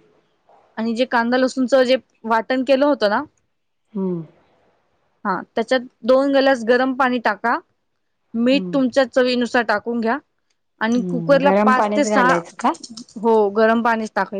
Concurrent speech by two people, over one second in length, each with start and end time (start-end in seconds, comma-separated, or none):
10.8-12.3